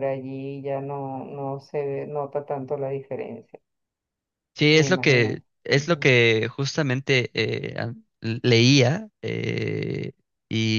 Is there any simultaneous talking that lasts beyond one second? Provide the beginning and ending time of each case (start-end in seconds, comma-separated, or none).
4.7-6.1